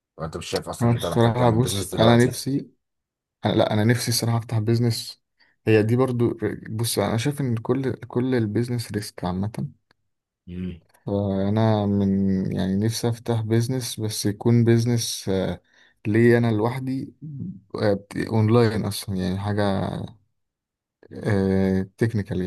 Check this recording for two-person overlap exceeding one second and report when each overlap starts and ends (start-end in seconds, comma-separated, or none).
0.8-2.4